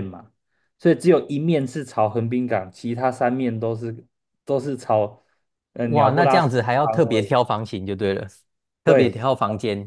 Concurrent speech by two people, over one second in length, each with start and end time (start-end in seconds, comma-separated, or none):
5.8-7.3